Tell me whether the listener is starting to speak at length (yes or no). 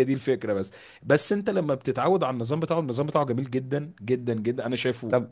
yes